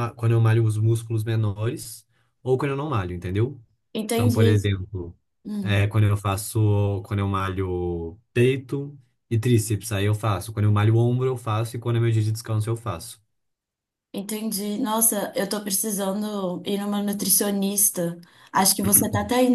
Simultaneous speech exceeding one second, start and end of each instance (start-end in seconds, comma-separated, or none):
none